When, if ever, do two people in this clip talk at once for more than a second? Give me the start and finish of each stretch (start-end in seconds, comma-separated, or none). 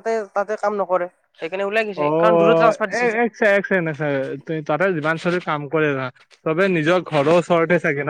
2.0-4.4